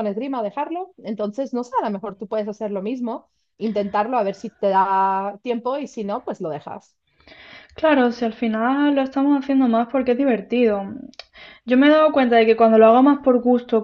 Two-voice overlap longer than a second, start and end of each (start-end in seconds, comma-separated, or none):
none